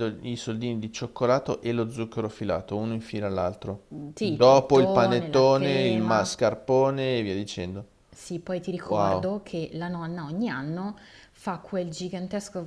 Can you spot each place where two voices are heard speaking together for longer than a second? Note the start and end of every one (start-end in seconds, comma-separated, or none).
4.2-6.4